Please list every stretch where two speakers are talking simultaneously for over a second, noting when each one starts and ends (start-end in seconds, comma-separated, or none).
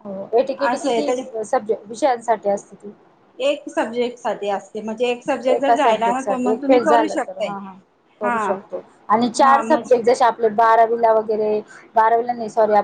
5.6-7.5